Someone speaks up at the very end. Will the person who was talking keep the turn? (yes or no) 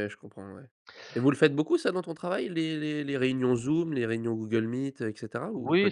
no